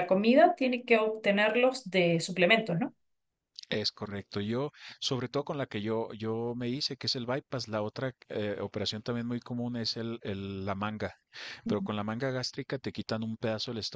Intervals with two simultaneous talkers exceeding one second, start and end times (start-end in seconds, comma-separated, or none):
none